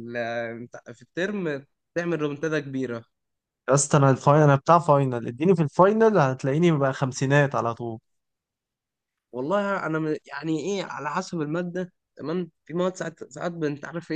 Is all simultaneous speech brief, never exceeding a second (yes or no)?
yes